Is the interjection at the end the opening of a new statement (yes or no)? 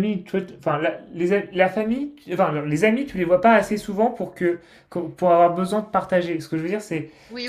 no